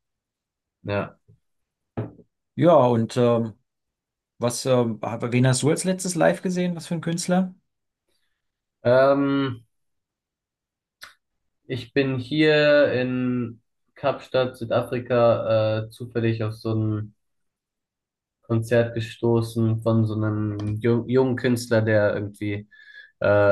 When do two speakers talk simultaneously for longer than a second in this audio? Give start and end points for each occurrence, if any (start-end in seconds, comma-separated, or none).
none